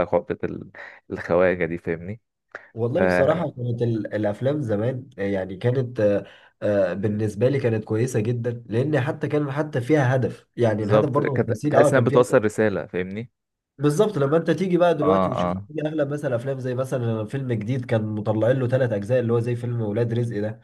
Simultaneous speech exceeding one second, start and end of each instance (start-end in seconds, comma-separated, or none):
10.8-12.4